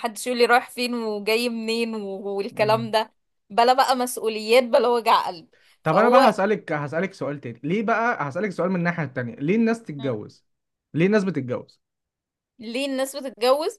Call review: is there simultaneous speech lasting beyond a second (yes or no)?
no